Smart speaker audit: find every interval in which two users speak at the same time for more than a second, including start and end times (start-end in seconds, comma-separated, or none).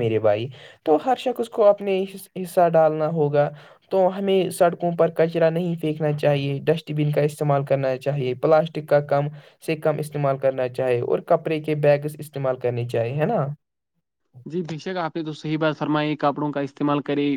none